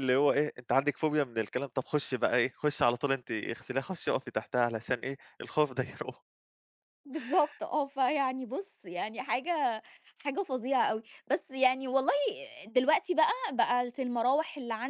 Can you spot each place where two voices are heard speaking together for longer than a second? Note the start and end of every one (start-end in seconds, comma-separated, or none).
none